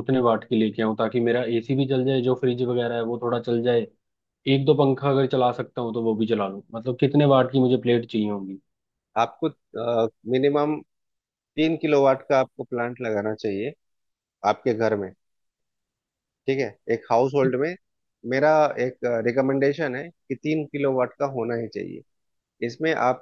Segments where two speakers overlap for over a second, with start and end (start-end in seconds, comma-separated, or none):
none